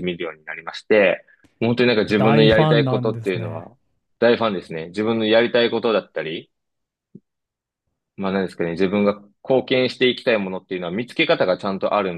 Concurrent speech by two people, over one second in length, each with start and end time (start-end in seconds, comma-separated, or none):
2.2-3.7